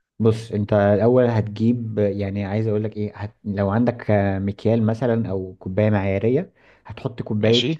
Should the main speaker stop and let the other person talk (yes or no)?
no